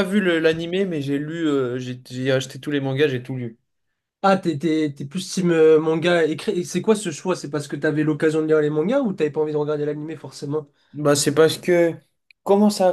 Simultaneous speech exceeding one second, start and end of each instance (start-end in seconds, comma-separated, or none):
none